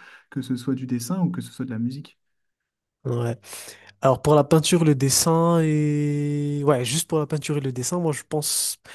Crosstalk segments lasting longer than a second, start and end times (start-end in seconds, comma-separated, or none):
none